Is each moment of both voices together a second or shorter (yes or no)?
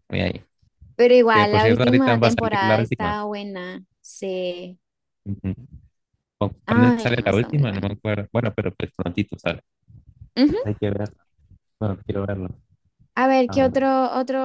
no